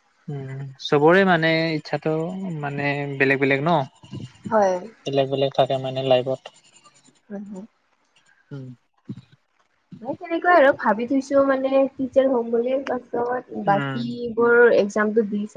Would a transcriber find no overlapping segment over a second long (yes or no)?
yes